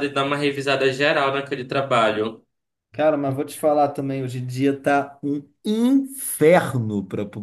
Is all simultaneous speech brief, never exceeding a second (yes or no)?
yes